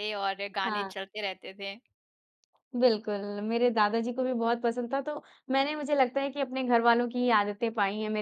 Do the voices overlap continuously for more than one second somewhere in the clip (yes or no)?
no